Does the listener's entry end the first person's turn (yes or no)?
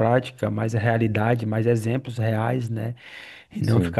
no